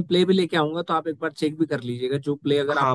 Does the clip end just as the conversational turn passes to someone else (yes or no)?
yes